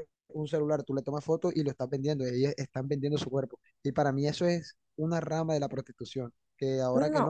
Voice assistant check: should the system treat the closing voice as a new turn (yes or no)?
no